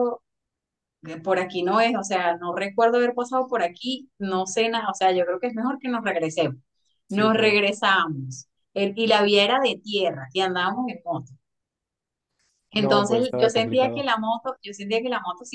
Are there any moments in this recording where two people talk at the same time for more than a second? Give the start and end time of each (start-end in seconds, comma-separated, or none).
12.8-14.1